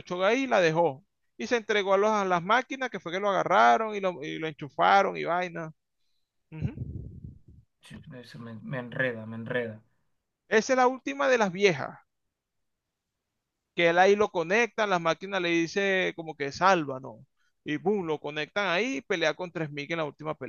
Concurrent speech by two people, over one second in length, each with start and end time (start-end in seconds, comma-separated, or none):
none